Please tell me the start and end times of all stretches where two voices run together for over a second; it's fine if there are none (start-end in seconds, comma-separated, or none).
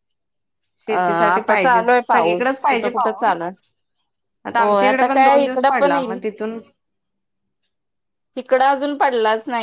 0.9-3.4, 4.6-6.2